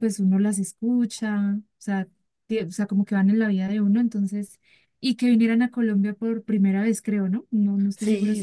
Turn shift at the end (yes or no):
yes